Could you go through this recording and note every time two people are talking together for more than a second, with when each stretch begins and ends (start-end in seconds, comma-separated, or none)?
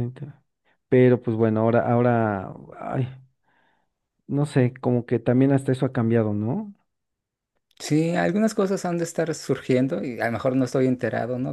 none